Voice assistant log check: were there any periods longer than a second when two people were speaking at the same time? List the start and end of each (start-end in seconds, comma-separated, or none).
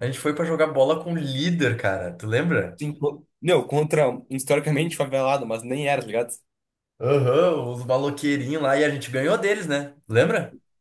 none